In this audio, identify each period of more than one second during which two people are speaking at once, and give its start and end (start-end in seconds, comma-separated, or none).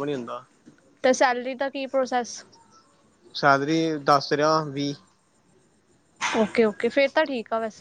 none